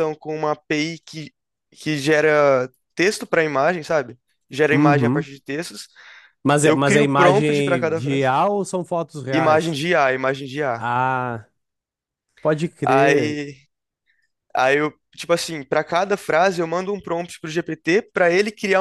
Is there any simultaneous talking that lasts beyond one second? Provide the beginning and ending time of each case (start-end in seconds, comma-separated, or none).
6.6-8.3